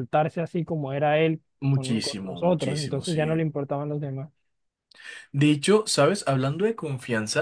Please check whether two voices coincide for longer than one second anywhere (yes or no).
yes